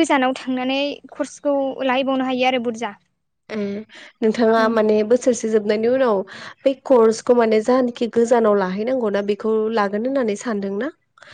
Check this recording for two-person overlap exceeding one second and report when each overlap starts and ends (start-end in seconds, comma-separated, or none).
none